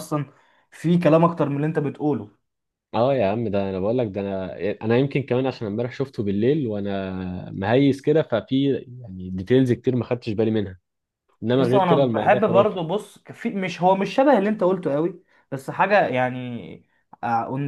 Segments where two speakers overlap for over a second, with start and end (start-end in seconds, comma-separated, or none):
11.6-12.8